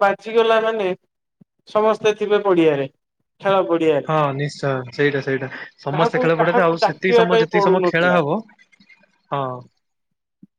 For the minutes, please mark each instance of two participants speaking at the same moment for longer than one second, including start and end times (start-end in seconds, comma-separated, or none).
5.9-8.2